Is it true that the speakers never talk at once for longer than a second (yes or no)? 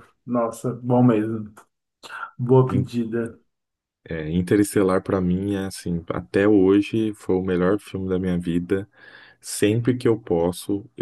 yes